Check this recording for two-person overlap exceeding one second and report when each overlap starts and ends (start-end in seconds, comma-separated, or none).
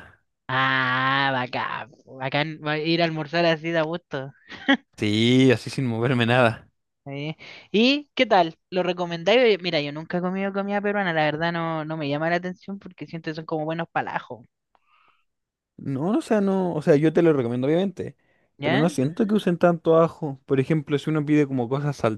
none